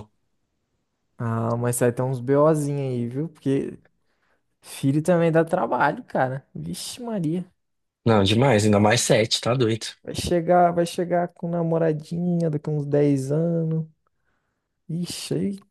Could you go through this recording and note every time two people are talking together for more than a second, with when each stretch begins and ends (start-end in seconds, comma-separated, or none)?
none